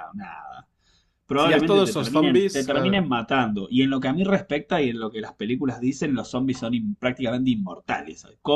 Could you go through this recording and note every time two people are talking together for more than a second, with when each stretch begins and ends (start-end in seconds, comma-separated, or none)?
1.4-3.1